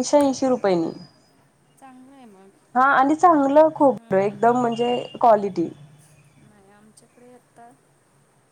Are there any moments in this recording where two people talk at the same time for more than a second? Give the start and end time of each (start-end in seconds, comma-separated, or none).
none